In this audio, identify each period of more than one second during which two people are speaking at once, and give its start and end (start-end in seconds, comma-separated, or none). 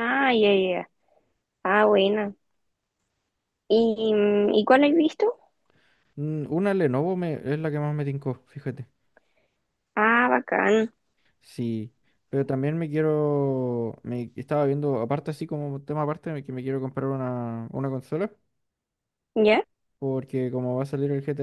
none